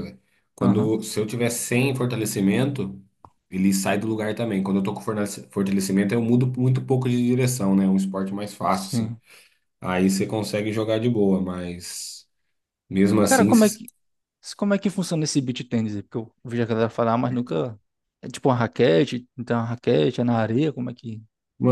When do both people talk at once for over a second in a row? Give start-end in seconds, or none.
none